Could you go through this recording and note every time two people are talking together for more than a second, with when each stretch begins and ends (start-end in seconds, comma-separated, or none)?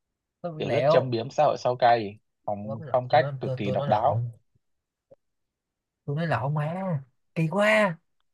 2.6-4.2